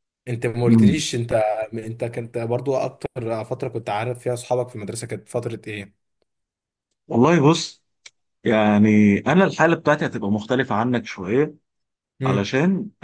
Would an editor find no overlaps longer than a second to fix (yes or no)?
yes